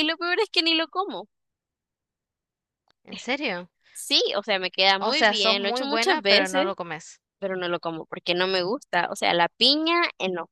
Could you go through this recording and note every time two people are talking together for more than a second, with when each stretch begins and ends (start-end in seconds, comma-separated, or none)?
5.0-6.7